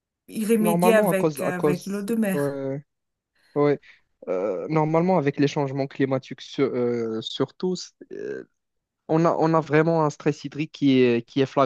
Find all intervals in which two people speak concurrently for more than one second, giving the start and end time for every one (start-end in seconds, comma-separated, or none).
0.6-2.6